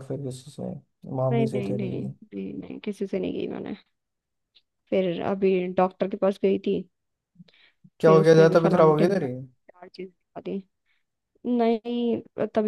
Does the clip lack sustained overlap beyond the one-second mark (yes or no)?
no